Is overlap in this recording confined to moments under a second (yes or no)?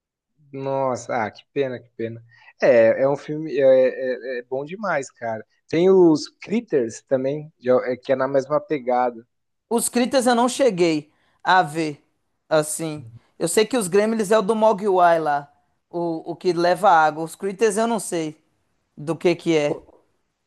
yes